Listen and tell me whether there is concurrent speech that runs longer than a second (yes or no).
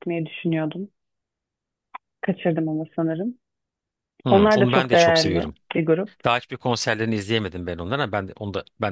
yes